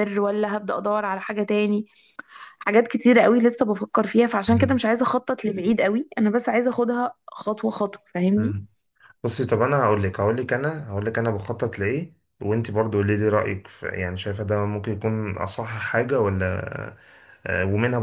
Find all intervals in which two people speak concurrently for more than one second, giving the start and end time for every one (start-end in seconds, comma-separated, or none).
none